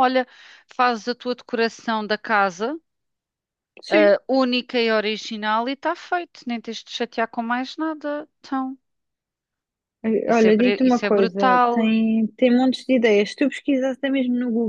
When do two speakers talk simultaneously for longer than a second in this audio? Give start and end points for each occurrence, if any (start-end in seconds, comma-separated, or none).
10.3-11.9